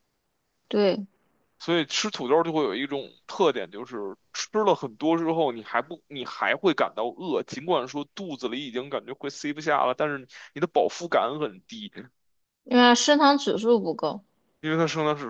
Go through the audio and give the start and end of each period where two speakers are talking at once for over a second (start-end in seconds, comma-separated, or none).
none